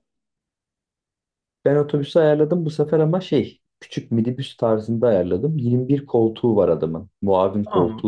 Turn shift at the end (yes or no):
yes